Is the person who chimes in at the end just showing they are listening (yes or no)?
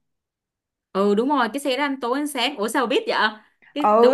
no